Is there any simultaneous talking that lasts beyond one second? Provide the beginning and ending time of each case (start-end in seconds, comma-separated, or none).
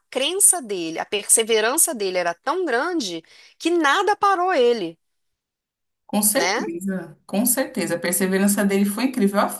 none